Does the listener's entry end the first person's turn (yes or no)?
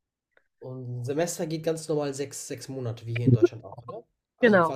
no